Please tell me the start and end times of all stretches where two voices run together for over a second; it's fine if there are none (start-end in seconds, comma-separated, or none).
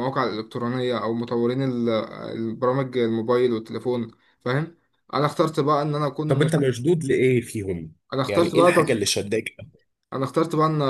none